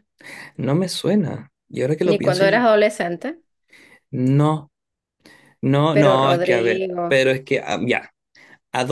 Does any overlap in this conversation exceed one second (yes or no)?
yes